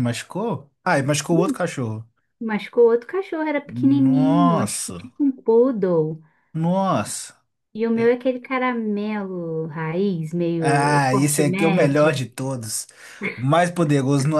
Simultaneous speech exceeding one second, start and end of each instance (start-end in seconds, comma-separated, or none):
3.7-5.1, 10.6-12.2